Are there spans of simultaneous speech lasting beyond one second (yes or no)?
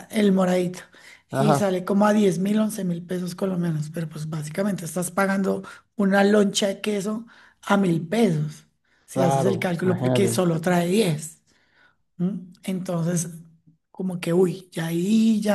yes